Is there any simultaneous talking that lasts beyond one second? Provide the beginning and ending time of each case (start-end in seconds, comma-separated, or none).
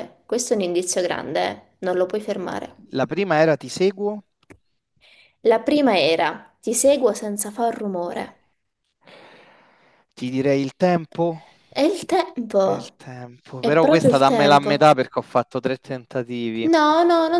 13.6-14.9